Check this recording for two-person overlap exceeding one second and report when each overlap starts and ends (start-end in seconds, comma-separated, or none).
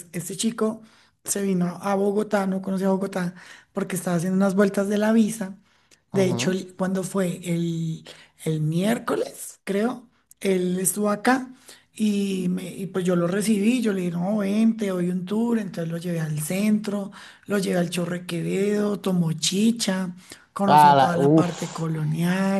20.7-21.9